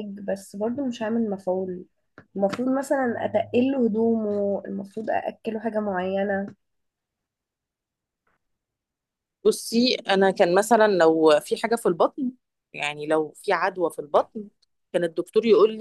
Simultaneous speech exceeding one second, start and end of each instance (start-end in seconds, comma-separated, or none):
none